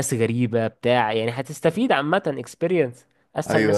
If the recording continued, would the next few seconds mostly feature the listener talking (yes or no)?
yes